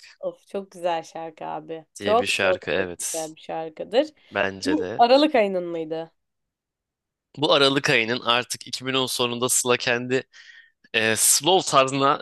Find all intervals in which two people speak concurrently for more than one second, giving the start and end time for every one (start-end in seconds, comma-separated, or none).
2.0-3.3